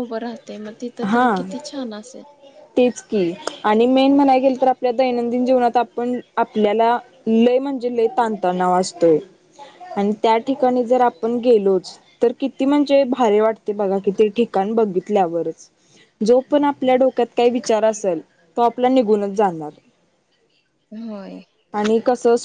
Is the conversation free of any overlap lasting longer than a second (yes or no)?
yes